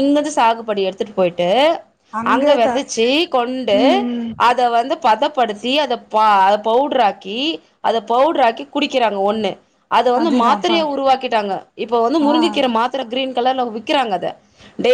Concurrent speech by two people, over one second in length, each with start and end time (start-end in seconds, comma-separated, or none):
none